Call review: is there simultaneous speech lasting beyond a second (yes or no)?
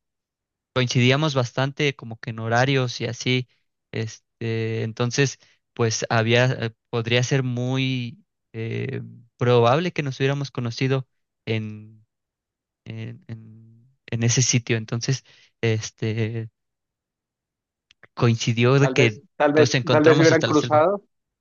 yes